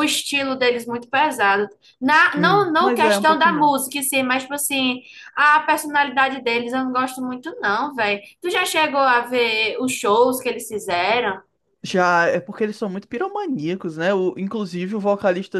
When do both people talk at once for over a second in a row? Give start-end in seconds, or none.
2.4-3.8